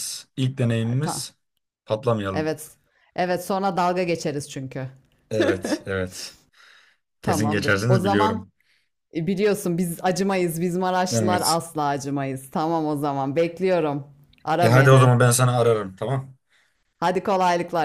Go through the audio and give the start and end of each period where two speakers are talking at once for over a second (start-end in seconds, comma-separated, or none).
7.2-8.5